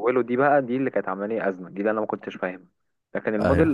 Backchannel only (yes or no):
yes